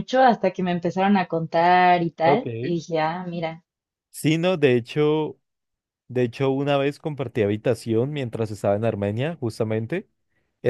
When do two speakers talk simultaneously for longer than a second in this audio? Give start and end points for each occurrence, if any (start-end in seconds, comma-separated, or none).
none